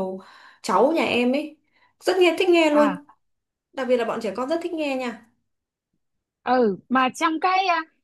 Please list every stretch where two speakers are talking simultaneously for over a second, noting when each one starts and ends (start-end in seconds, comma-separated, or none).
none